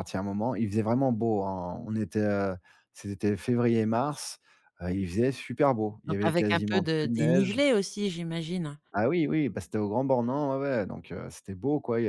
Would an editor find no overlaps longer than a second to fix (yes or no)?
no